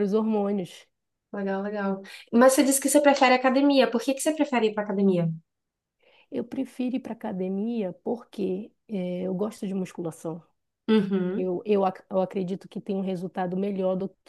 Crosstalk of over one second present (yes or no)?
no